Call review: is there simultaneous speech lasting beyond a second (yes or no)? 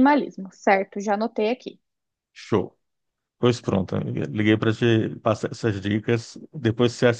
no